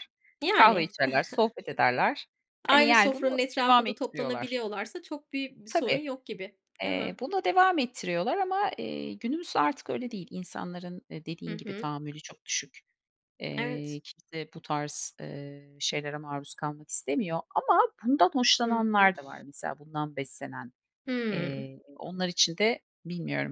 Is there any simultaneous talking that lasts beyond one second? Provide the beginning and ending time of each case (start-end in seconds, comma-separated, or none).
2.7-4.6